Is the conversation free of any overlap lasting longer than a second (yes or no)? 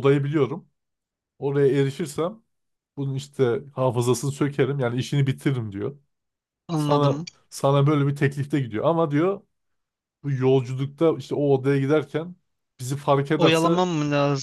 yes